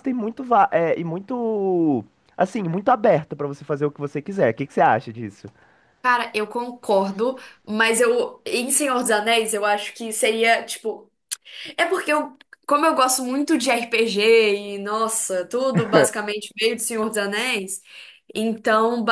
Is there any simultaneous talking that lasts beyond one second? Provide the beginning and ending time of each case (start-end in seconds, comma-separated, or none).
none